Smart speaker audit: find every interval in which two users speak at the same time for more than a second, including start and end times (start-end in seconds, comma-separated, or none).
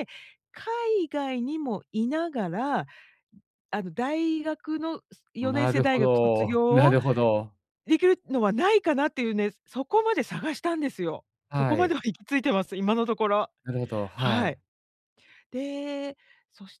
5.4-7.0